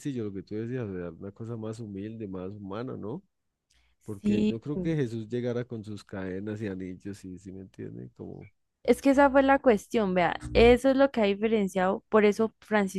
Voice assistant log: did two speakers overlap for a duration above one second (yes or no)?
no